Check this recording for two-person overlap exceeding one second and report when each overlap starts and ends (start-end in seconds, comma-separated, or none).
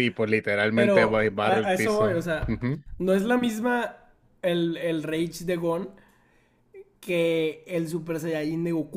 0.7-2.6